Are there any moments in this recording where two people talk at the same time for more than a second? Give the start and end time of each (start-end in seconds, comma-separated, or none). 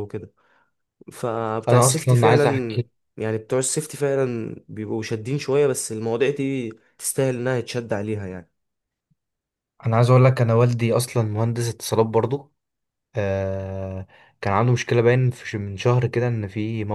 1.7-2.9